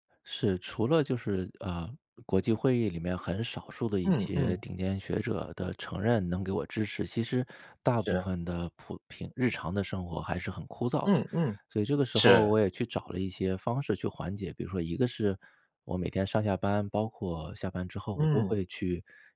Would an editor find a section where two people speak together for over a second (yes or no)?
no